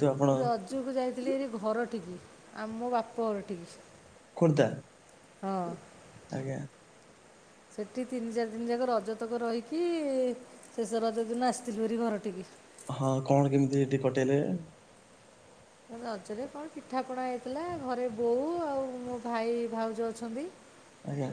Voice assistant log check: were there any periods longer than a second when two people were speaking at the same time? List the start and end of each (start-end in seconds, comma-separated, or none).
none